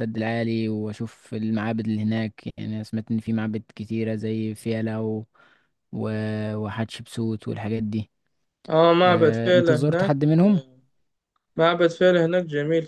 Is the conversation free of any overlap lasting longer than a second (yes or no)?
no